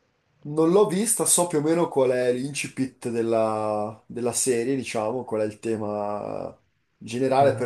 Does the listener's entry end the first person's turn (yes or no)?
no